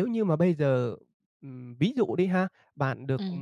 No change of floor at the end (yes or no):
yes